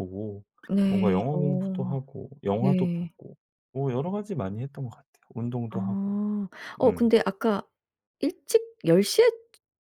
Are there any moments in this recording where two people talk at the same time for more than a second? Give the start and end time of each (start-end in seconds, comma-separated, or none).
none